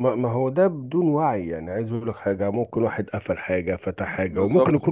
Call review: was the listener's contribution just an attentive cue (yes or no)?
yes